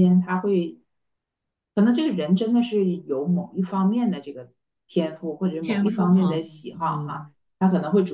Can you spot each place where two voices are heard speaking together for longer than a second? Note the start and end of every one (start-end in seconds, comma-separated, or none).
5.6-7.2